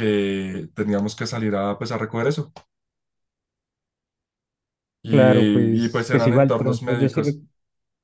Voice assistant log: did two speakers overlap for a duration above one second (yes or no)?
yes